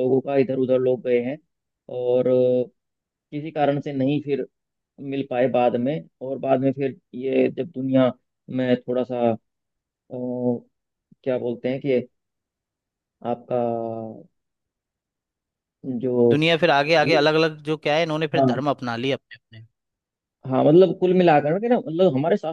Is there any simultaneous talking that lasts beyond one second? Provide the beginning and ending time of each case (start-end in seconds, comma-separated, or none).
none